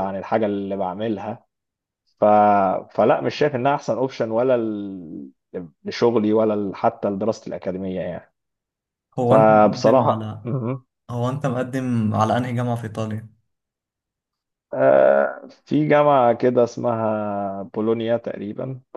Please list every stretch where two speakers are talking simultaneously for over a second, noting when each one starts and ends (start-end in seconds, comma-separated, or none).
9.2-10.5